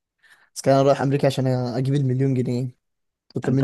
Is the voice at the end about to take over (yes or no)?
yes